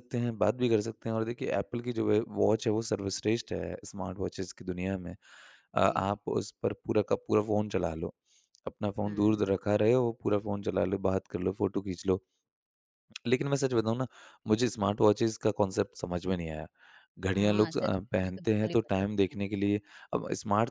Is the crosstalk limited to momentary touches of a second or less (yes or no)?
no